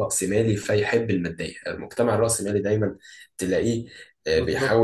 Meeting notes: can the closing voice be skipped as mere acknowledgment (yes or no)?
yes